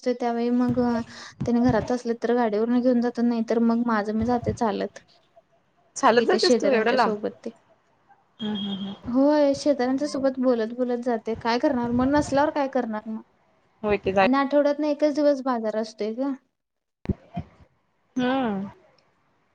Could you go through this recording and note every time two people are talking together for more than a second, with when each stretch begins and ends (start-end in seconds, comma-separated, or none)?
none